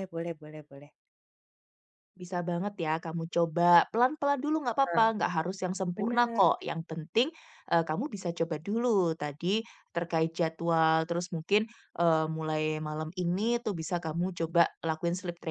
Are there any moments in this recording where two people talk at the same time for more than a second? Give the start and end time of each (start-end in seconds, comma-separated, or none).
none